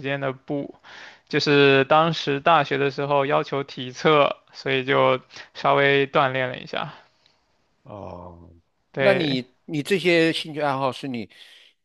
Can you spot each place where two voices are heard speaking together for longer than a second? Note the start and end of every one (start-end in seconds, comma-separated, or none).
none